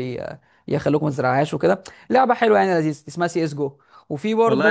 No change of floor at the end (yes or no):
no